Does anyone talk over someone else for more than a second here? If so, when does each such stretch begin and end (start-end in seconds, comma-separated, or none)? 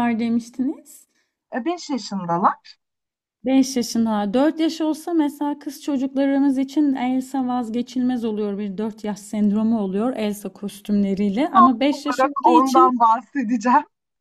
11.5-12.9